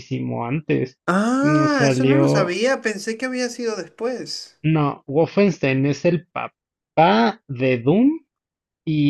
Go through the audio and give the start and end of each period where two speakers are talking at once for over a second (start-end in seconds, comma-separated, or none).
1.4-2.6